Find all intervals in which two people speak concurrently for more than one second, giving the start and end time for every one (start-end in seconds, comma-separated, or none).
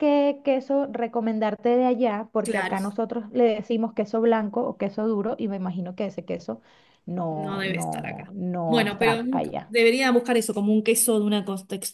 7.3-9.7